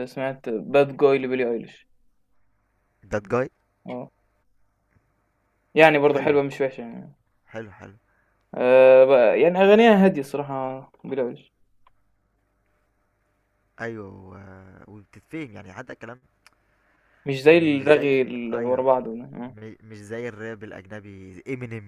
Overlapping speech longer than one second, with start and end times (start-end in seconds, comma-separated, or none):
17.5-18.8